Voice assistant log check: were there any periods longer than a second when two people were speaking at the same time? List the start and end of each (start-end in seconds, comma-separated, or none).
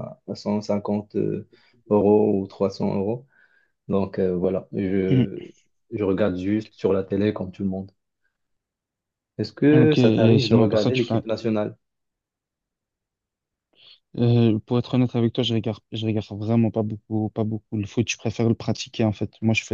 9.7-11.1